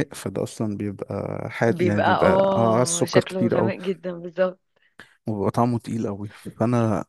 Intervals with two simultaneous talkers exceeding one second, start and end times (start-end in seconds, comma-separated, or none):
1.7-3.7